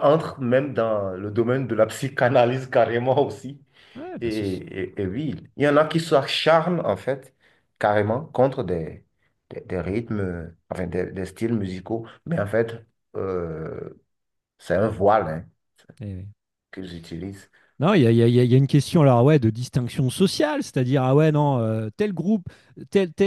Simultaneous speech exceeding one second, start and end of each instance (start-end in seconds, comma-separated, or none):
none